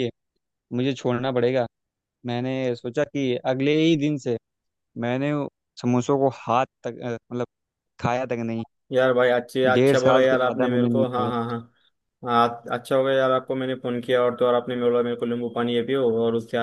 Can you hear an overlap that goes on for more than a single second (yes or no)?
yes